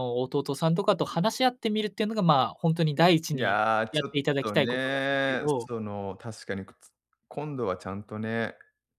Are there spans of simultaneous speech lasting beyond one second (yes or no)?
yes